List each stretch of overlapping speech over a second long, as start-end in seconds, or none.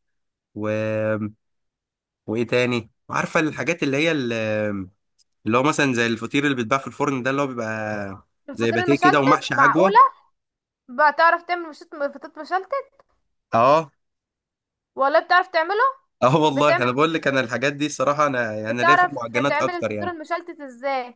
8.5-9.9, 18.7-20.1